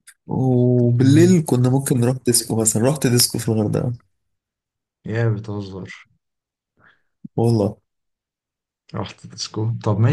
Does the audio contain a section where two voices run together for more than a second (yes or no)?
no